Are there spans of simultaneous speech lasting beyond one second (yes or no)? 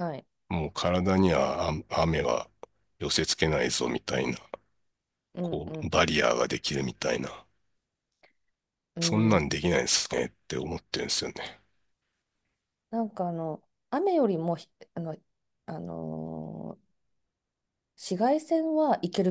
no